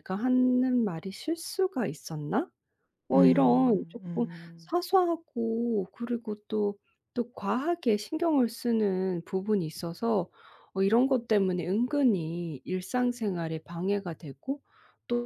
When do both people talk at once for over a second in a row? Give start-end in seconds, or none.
3.1-4.7